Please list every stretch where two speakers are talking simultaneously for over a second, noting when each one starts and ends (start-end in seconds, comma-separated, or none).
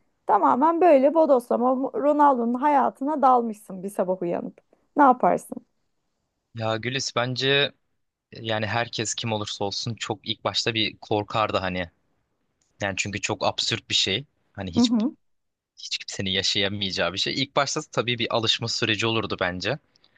none